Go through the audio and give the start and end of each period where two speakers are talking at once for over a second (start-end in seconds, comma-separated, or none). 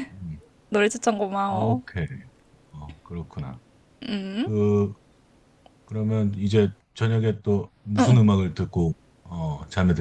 none